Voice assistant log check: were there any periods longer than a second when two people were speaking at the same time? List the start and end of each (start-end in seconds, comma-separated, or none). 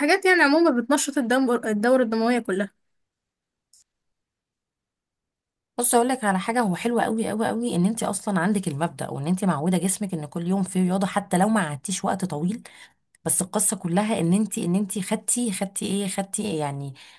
none